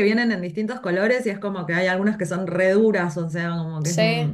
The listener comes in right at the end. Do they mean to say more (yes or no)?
yes